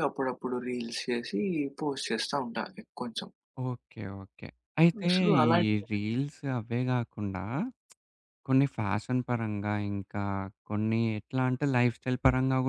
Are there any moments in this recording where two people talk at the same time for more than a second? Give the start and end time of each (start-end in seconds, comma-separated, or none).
none